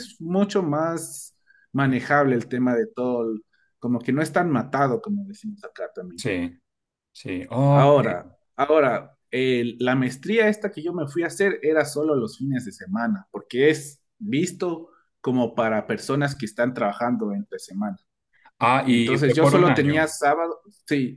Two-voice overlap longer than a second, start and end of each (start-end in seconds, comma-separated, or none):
18.9-20.1